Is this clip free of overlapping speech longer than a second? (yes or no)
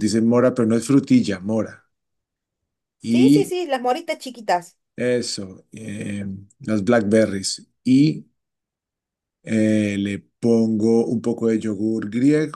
yes